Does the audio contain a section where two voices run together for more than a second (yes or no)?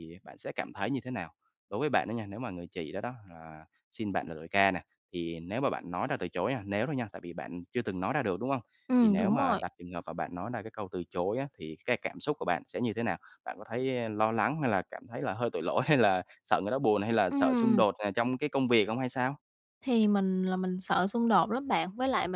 no